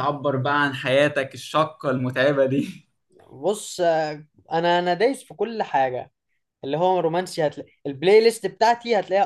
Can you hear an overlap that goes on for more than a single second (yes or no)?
no